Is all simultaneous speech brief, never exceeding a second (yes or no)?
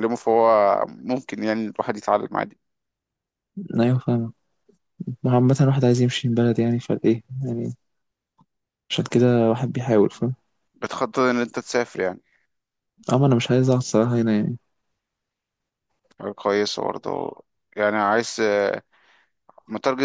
yes